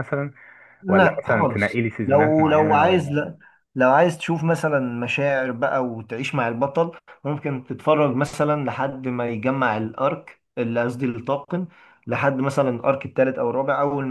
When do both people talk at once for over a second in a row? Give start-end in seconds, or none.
0.9-3.2